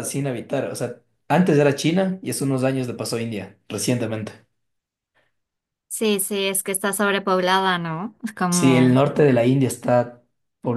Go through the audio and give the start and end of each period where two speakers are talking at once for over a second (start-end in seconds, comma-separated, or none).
none